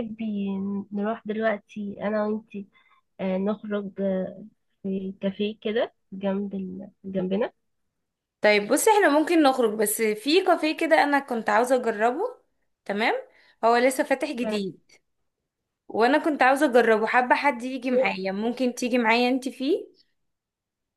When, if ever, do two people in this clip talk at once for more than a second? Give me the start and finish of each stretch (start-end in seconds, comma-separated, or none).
none